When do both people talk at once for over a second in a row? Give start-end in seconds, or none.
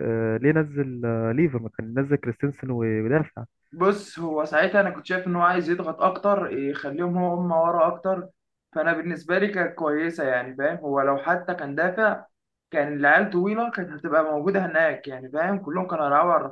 none